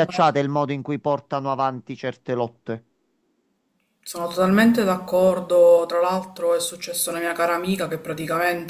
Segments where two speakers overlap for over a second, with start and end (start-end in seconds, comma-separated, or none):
none